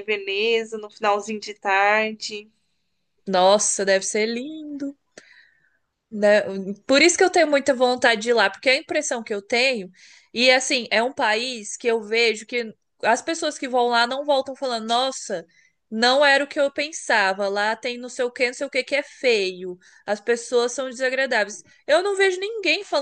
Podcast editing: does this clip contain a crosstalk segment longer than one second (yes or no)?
no